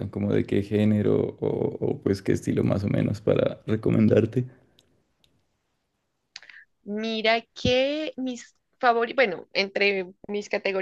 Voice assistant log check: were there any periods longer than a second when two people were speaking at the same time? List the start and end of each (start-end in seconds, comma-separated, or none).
none